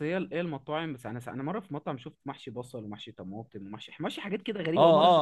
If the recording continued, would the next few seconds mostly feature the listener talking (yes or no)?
yes